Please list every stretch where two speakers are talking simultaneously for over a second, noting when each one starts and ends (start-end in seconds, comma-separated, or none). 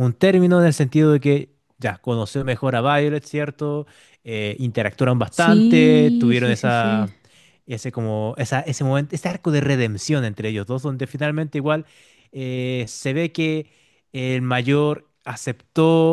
5.3-7.1